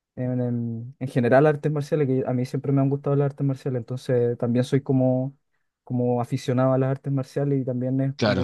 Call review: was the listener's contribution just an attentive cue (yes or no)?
yes